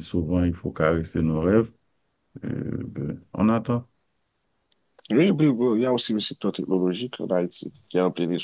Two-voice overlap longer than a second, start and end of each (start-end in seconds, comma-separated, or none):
none